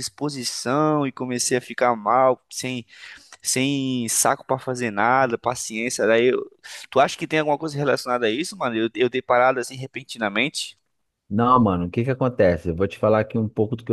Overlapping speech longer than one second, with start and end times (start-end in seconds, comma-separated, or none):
none